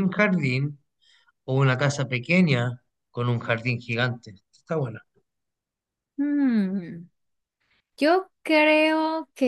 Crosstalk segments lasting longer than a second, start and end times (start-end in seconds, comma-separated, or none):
none